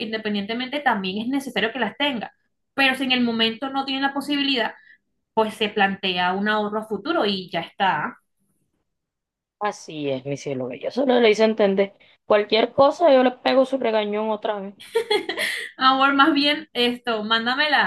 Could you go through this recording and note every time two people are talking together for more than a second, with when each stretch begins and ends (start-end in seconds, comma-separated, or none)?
none